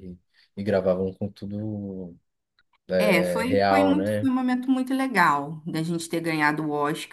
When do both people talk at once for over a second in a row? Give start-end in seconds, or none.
3.0-4.3